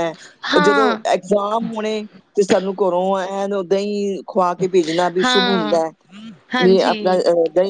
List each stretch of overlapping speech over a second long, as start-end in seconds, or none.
none